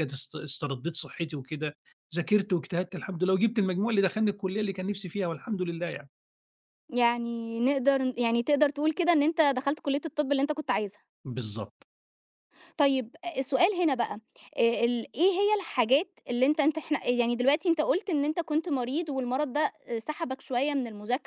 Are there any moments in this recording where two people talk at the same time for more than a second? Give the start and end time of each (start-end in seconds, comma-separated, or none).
none